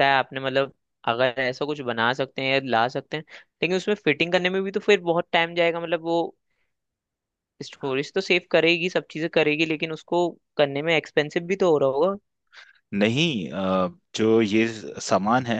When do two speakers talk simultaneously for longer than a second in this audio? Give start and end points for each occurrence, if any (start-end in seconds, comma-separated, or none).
none